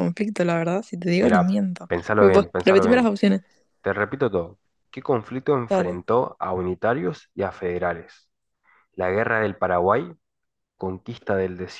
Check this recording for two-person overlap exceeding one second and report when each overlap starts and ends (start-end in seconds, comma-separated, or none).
1.2-3.1